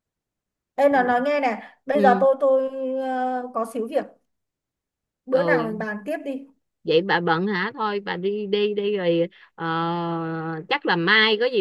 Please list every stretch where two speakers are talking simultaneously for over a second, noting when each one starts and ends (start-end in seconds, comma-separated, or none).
none